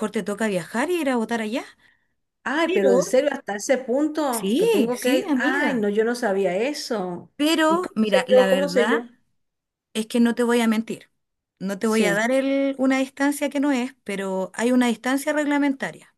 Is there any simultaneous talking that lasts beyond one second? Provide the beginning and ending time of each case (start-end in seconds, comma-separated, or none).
4.3-5.9, 7.7-9.0